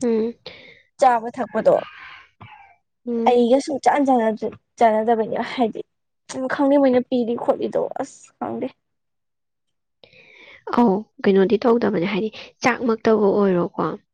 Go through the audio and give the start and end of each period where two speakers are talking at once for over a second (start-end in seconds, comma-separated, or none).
none